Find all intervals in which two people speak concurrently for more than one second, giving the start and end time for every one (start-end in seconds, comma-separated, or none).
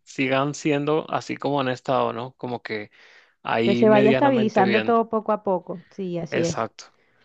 3.6-5.0